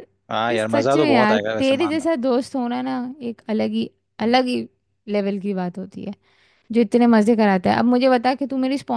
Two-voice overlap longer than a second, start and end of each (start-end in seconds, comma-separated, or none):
0.5-2.0